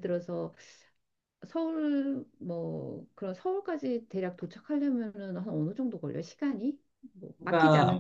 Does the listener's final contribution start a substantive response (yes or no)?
yes